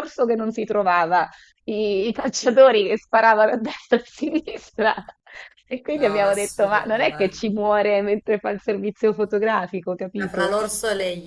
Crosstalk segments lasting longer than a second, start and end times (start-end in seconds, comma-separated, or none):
5.9-7.5